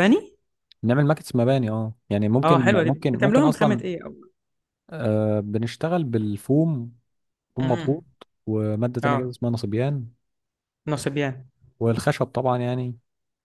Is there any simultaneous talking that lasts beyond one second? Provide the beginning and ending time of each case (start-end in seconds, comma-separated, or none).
2.4-3.8